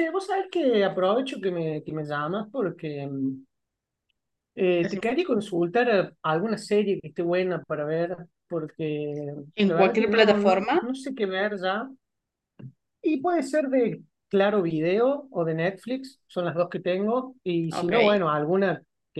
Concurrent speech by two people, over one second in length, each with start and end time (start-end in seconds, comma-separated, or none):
9.6-10.8